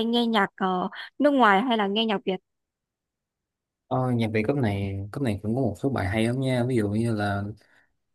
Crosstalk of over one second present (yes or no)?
no